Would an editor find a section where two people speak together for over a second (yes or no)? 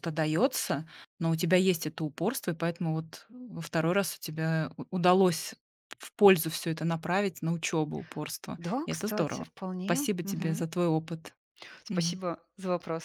yes